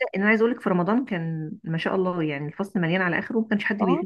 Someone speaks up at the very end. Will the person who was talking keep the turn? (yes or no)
no